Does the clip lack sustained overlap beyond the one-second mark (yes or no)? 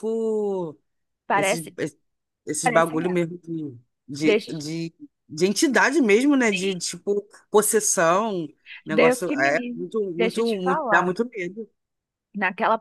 no